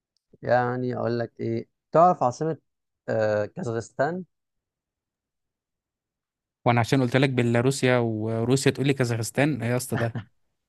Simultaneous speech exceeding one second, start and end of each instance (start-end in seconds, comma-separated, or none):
none